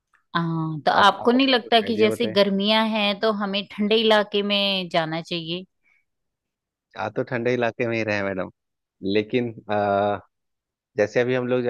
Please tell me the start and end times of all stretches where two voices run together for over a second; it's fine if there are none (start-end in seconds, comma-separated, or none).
1.0-2.4